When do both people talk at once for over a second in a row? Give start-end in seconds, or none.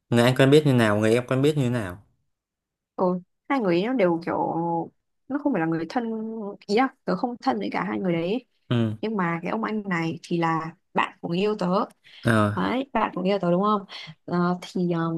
none